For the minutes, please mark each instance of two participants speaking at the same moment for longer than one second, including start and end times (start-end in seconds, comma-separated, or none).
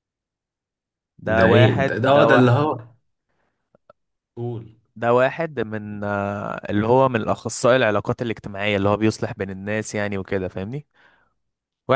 1.4-2.8